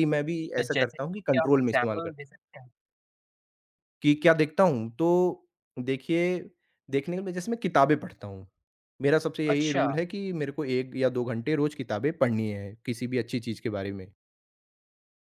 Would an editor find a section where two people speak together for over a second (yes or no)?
yes